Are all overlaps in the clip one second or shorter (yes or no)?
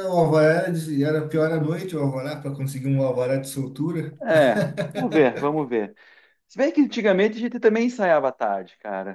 yes